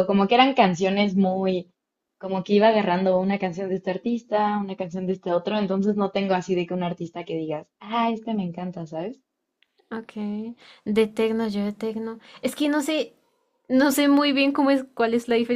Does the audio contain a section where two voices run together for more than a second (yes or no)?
no